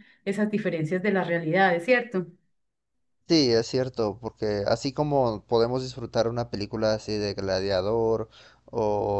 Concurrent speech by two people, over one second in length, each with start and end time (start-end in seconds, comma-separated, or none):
none